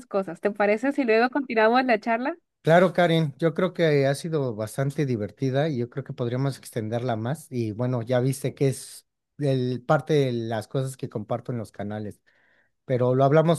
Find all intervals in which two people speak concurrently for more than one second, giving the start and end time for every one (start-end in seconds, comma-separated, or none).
none